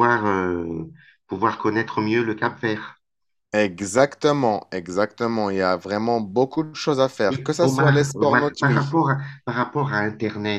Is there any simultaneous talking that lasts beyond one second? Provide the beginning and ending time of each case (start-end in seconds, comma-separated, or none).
7.3-9.0